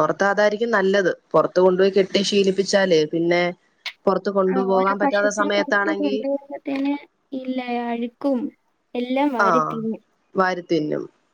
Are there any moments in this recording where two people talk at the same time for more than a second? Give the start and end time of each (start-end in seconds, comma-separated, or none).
4.5-6.2